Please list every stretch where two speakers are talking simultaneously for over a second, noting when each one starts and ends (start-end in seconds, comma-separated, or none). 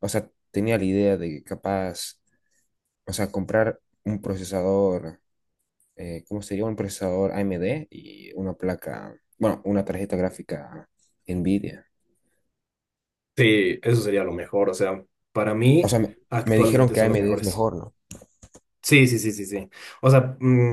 15.8-17.7